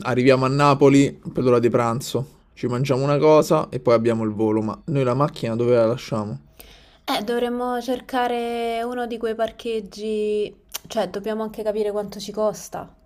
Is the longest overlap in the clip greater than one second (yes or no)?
no